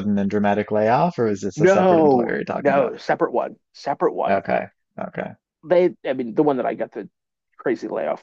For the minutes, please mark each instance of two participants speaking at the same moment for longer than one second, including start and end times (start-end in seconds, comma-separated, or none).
1.6-2.9